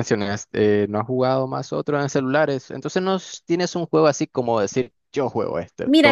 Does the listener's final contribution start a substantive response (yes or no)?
yes